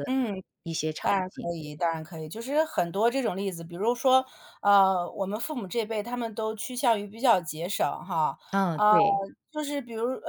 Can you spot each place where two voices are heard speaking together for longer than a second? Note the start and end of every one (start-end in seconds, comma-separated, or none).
none